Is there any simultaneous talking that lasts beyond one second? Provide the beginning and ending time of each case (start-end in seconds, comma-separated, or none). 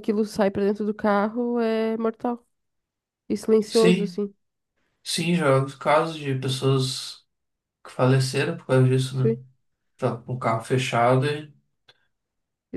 none